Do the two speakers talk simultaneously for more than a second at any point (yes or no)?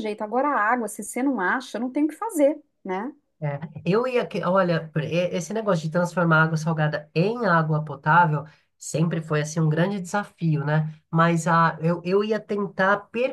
no